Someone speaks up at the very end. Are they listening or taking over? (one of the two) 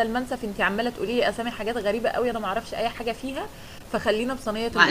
taking over